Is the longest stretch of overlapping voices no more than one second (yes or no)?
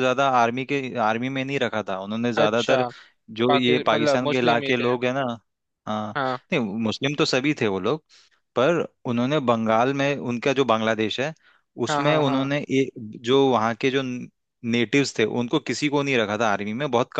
no